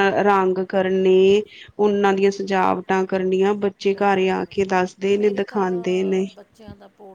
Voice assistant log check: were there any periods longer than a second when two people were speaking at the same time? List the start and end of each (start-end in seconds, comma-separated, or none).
none